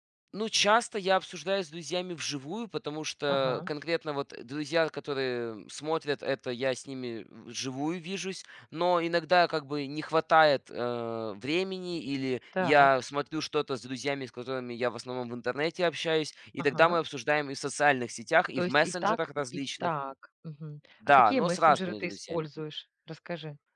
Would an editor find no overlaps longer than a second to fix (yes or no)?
no